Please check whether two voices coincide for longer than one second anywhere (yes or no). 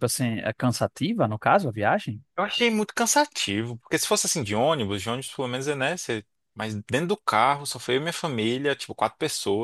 no